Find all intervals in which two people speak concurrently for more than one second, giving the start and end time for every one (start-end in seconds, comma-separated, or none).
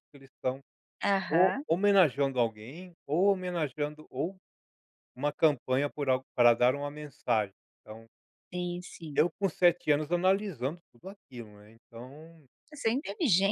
none